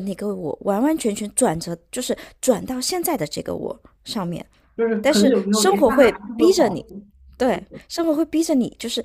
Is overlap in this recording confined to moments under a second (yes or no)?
no